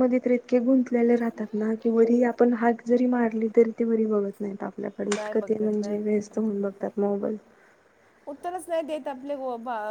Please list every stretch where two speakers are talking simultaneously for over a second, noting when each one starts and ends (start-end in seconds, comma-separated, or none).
5.1-6.4